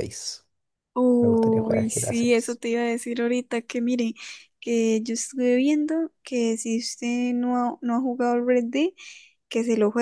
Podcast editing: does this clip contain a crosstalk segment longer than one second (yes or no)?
yes